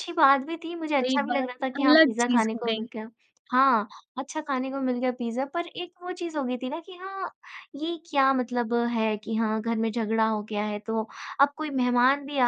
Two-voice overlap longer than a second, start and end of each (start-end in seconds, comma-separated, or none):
0.9-2.9